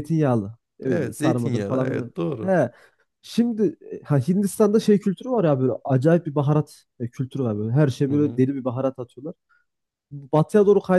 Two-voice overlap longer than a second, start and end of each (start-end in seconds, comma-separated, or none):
0.9-2.5